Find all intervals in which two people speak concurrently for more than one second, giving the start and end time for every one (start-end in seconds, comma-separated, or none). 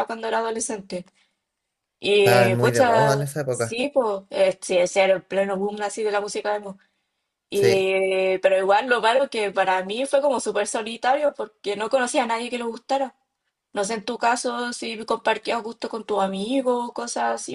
2.2-3.8